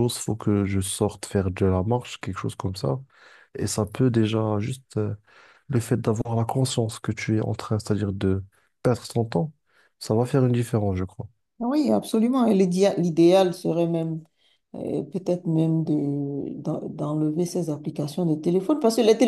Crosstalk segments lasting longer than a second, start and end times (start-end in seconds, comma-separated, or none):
none